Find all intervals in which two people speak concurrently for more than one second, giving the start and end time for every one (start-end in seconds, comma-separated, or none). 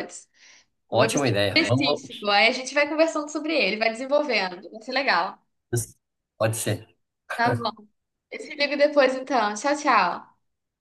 0.9-2.3